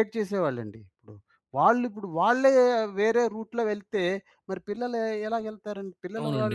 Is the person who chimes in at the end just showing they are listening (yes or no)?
no